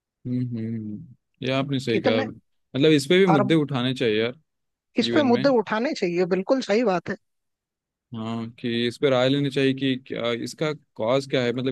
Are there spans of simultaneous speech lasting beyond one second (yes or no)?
no